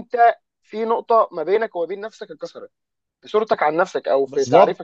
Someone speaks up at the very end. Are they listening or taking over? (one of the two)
taking over